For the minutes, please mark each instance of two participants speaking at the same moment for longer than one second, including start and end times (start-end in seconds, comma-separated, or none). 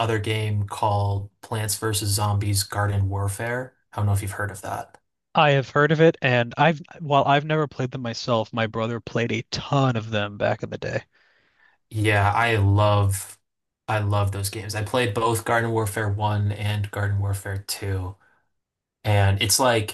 none